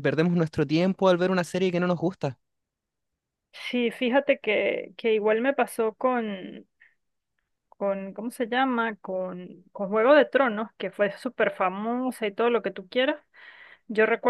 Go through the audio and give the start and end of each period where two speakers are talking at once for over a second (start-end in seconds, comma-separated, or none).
none